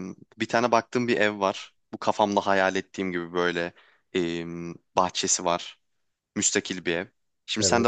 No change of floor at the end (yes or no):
yes